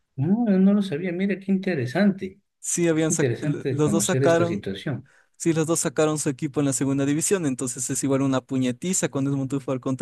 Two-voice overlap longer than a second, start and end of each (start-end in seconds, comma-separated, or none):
3.0-4.6